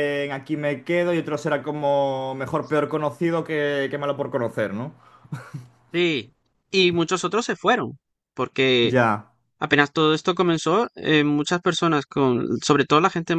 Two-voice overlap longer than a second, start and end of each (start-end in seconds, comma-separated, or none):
none